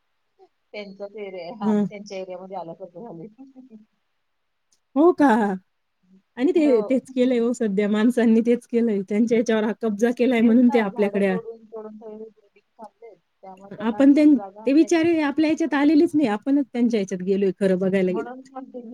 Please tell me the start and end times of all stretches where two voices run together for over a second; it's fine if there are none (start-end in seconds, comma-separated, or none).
none